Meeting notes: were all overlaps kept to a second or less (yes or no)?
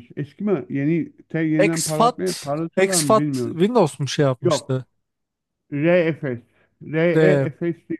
no